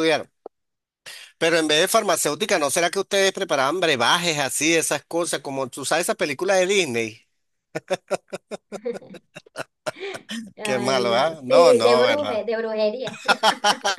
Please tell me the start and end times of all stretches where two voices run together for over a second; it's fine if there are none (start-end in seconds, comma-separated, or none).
10.6-12.4